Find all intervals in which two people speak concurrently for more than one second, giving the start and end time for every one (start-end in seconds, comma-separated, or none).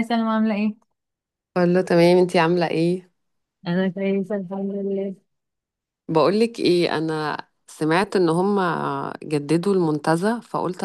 none